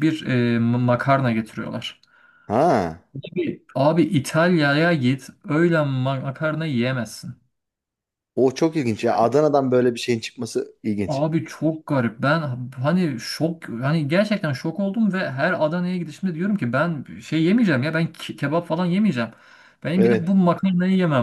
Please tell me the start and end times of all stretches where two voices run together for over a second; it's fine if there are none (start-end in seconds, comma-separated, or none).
none